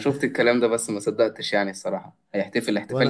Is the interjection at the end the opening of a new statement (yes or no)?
no